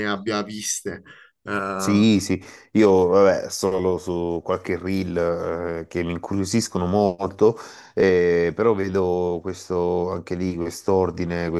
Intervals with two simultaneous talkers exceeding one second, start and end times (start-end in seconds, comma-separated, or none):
none